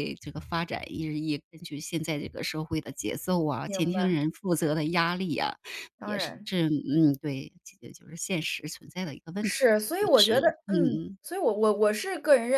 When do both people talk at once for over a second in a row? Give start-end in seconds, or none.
9.4-11.2